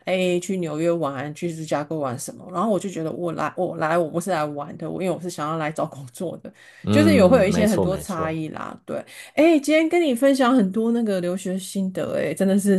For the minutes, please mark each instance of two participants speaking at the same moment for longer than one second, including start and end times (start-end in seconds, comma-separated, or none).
6.9-8.4